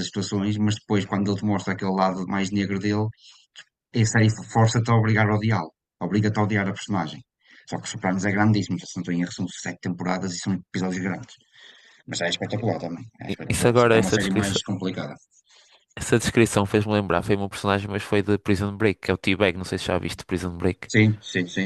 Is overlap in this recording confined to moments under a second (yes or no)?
no